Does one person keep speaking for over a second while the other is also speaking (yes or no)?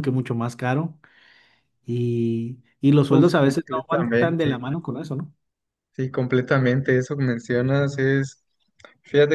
yes